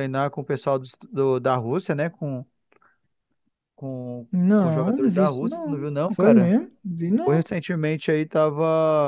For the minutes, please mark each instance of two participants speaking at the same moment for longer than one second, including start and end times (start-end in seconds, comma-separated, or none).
4.3-6.5